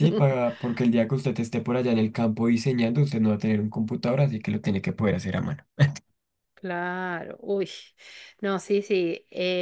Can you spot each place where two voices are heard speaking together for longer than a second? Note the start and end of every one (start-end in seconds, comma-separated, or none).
none